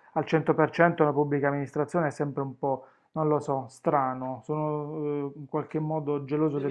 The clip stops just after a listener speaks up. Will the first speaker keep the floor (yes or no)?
no